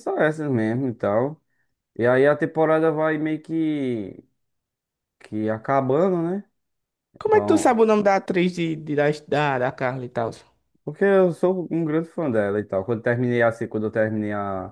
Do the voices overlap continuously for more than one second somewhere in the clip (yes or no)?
no